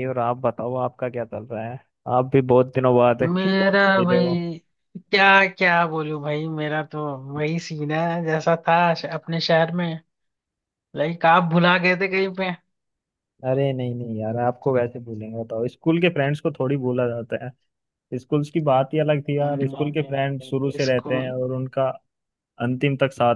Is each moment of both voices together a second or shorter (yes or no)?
yes